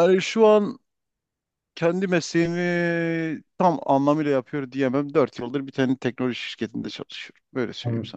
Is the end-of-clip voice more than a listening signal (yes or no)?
yes